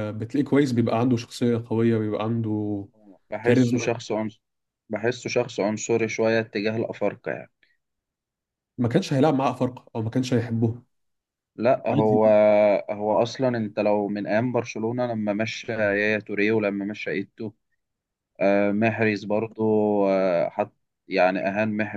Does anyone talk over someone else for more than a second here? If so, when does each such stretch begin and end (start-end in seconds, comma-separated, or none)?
none